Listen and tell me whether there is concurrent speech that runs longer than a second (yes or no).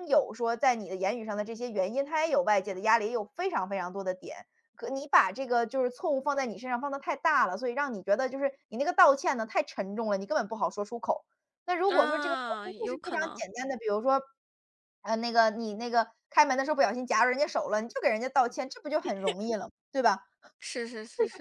yes